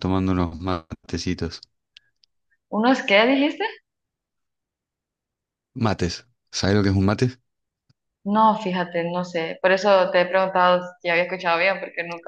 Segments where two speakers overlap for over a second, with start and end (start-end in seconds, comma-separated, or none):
none